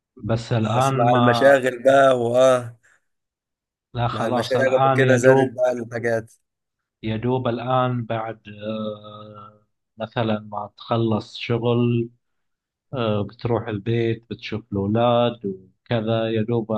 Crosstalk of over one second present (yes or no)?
yes